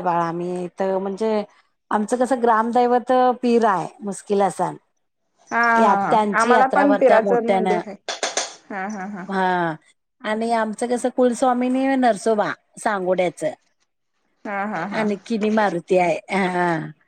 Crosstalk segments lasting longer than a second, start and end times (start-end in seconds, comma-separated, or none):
5.8-7.8